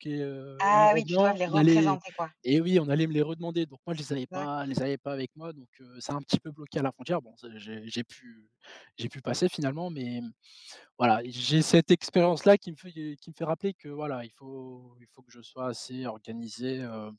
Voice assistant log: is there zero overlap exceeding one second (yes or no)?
no